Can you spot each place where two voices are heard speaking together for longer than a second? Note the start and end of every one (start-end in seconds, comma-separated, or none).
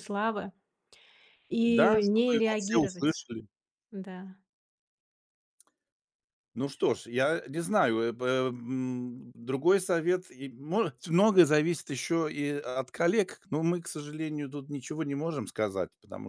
1.6-3.2